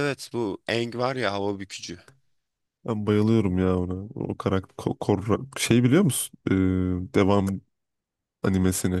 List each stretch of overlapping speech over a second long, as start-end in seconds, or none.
none